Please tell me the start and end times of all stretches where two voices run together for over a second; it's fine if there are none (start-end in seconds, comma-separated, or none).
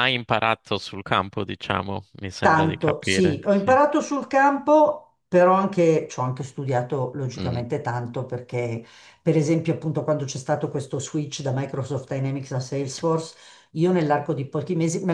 2.4-3.8